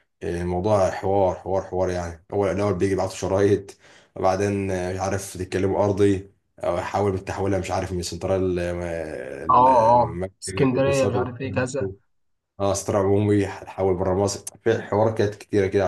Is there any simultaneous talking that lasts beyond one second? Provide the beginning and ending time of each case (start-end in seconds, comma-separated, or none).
9.5-11.3